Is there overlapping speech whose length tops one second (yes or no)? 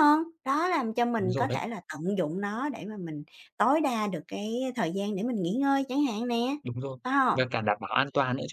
no